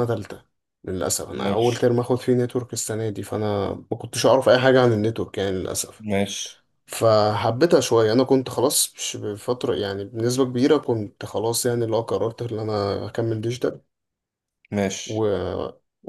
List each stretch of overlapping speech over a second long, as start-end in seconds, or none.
none